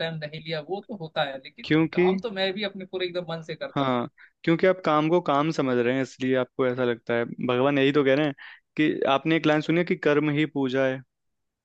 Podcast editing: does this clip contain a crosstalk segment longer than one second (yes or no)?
no